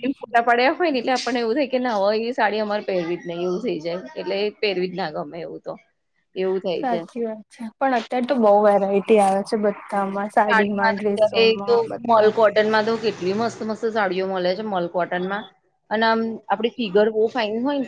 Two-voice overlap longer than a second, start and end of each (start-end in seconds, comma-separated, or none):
10.5-12.3